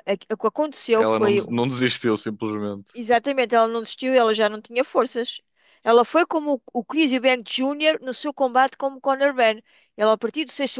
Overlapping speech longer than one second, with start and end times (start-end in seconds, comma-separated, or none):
none